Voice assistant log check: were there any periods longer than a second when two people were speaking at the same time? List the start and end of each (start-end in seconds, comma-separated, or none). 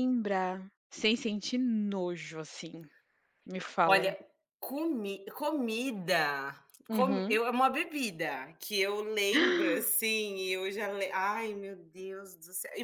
none